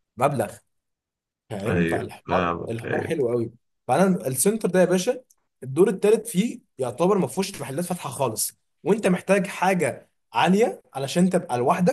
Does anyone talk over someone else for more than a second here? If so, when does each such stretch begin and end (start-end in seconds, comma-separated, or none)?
1.7-3.2